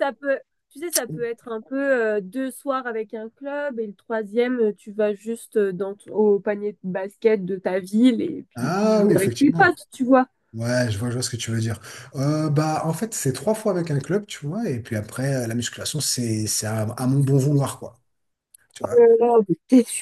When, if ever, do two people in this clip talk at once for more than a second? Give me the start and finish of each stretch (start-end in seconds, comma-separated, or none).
8.6-9.8